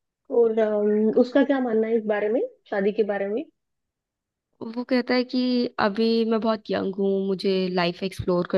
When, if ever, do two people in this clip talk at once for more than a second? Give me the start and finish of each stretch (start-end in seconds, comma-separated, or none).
none